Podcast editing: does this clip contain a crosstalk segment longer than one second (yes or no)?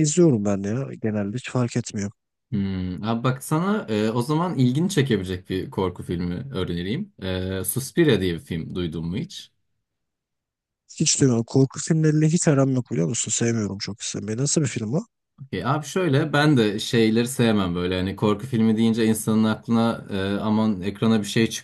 no